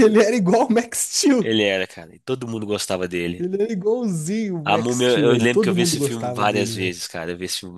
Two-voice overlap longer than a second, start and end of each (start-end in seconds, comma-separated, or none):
4.7-7.0